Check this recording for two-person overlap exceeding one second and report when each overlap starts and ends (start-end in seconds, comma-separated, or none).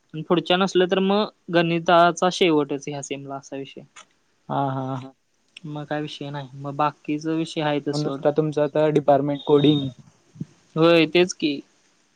none